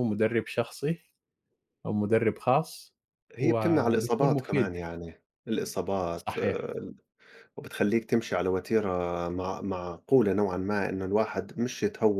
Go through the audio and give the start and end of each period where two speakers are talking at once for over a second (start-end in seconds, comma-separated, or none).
3.4-4.8